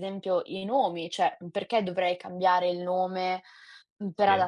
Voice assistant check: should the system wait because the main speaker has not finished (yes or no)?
yes